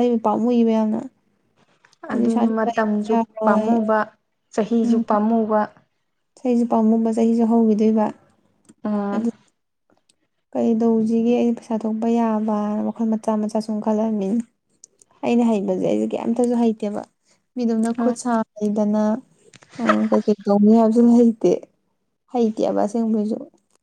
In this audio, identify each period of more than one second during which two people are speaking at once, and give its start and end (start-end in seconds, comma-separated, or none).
2.1-3.7